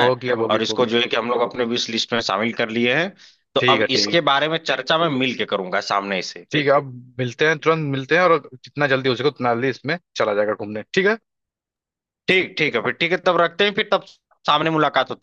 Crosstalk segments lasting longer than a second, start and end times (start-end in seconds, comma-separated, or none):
none